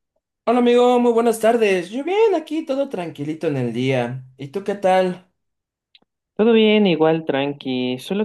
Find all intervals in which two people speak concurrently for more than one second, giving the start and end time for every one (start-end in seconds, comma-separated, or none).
none